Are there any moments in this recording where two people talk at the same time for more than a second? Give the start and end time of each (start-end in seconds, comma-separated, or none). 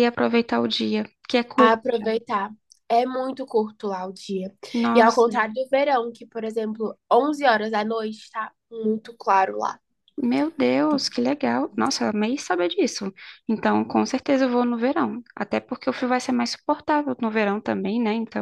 none